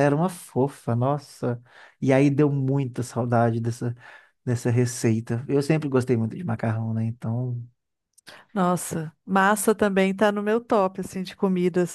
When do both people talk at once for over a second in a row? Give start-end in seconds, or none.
none